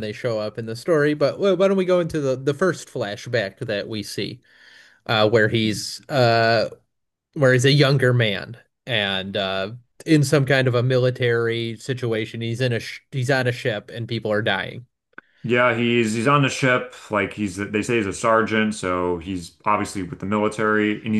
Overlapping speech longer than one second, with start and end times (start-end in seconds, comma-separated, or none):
none